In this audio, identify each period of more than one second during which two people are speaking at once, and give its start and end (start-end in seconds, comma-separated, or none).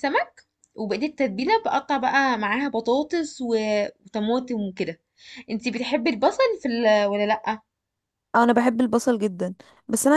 none